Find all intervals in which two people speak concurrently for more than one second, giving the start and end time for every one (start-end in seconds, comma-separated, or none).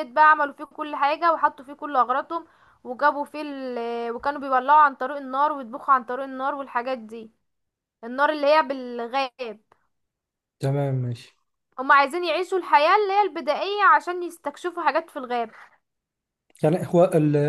none